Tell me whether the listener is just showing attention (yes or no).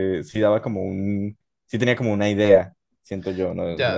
no